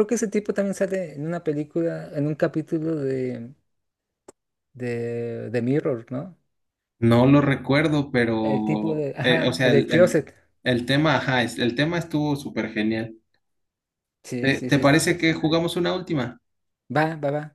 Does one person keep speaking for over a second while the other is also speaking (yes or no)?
yes